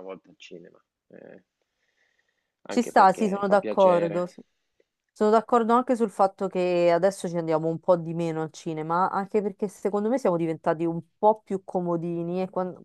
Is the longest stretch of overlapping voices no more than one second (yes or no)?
no